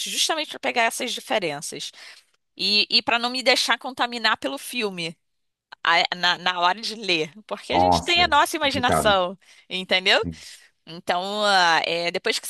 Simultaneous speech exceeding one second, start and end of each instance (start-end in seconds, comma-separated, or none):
7.7-9.2